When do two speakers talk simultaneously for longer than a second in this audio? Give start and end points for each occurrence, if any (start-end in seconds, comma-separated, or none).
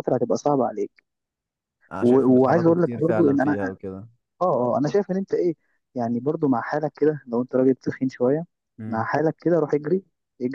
2.0-3.6